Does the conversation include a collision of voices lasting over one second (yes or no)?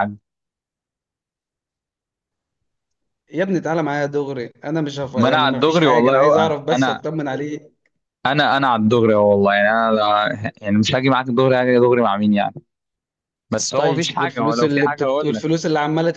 yes